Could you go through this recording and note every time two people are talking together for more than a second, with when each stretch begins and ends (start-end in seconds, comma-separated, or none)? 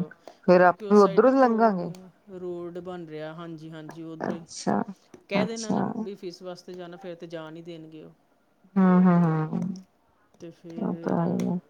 0.6-1.8